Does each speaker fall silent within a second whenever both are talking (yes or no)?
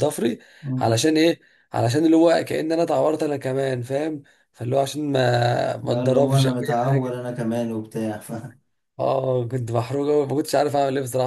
no